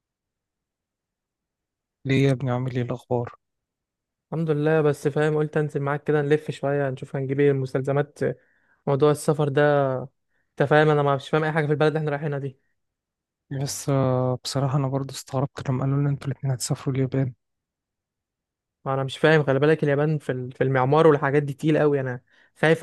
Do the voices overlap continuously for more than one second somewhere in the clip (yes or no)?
no